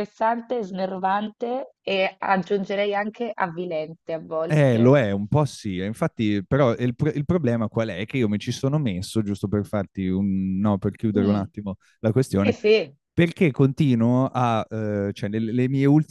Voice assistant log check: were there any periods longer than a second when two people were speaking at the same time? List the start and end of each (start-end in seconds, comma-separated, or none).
none